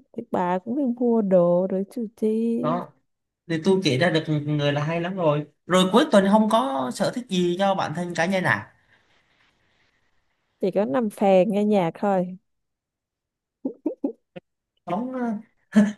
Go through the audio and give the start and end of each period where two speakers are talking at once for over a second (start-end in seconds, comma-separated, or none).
none